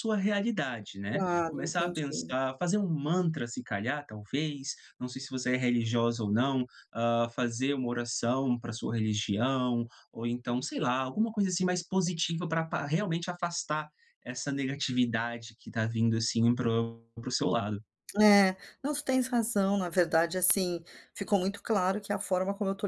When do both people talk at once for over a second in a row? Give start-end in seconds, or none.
1.1-2.4